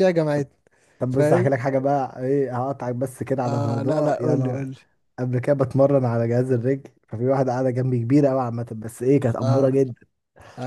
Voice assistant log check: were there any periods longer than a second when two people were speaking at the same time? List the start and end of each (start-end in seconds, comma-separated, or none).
3.4-4.7